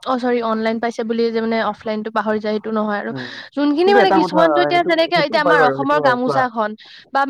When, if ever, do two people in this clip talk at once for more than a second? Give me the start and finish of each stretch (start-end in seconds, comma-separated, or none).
3.8-6.4